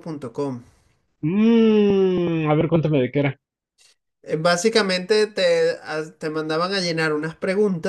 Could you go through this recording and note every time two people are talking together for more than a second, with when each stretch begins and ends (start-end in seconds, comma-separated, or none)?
none